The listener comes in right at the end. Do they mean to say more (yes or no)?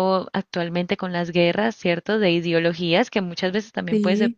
no